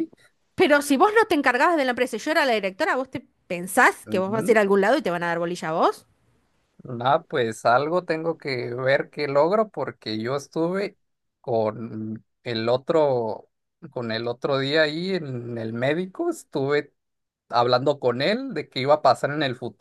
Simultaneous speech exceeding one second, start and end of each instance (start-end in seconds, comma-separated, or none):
none